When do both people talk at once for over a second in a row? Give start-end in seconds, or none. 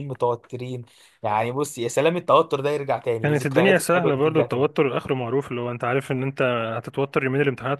3.2-4.6